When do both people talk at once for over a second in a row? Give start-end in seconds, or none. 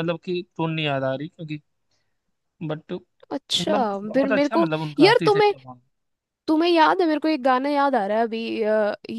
3.3-5.5